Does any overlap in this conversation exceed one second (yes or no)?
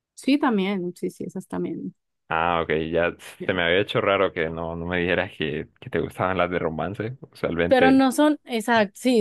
no